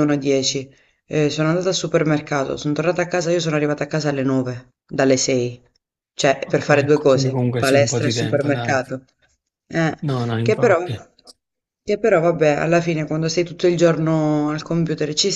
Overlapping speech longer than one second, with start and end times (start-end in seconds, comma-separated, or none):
6.4-8.8